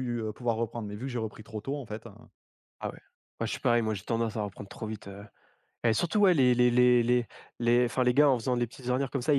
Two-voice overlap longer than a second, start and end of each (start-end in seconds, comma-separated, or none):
none